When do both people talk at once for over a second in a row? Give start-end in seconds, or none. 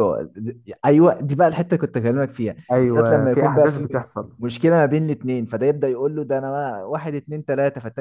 2.7-4.0